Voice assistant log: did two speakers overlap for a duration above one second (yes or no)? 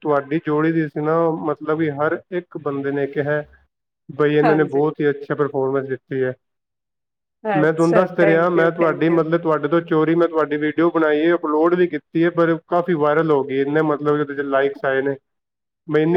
yes